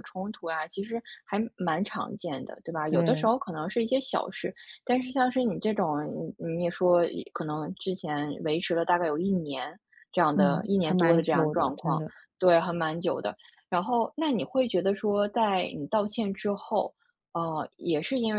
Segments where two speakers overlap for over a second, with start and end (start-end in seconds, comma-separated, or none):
10.3-12.1